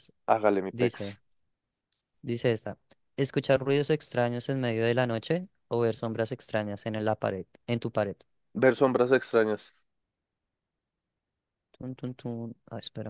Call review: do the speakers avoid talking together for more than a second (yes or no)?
yes